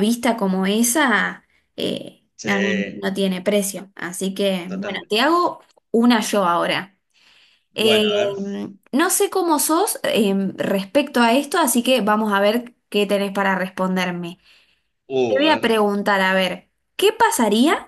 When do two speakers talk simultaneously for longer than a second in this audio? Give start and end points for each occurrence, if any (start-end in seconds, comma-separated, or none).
none